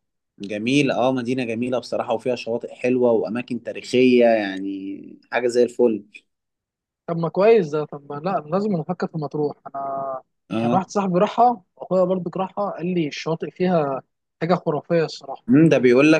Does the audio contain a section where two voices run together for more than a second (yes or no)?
no